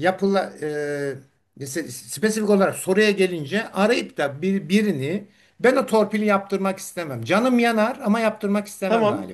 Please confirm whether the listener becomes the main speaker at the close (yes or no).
yes